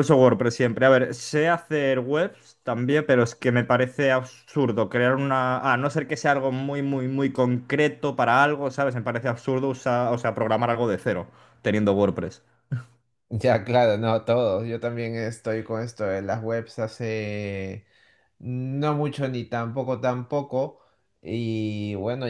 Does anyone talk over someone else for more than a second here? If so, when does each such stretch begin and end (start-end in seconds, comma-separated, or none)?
none